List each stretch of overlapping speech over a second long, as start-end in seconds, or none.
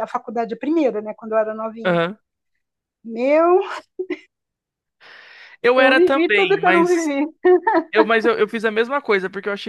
5.8-7.1